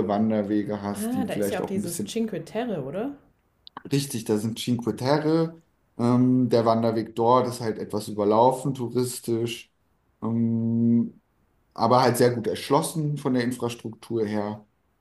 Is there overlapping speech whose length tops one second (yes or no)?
yes